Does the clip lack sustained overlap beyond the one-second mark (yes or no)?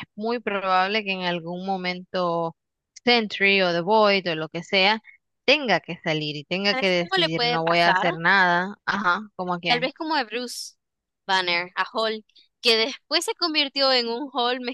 no